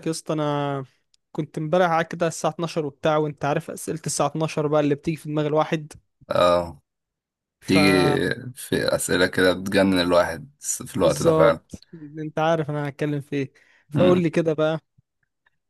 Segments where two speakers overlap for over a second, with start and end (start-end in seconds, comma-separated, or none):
none